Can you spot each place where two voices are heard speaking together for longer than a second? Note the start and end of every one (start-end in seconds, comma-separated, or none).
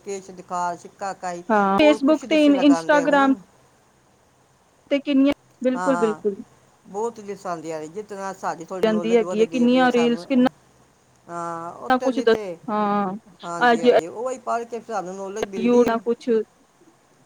1.8-3.4, 8.8-10.2